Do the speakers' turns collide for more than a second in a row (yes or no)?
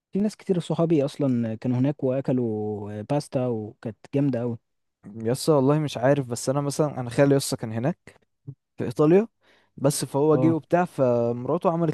no